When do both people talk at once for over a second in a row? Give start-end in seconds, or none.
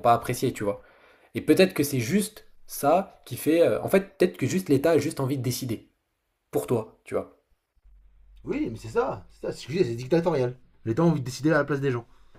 none